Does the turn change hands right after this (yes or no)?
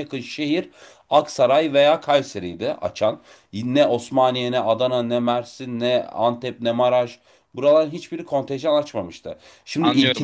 yes